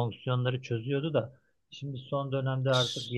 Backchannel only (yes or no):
yes